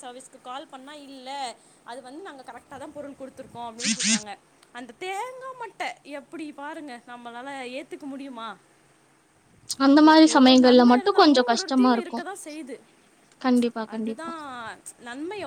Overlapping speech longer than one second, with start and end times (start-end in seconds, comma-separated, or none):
10.1-12.2